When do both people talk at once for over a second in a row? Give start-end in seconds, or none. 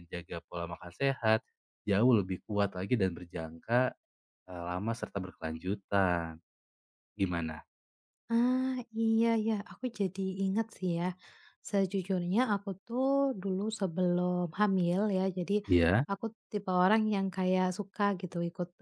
none